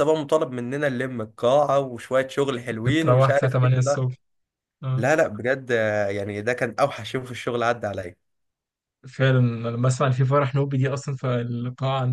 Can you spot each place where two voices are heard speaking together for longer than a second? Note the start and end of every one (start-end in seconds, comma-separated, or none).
2.7-4.0